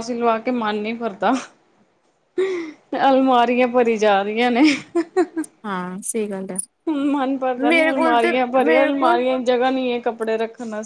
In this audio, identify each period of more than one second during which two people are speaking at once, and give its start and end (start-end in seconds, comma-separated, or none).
7.7-9.2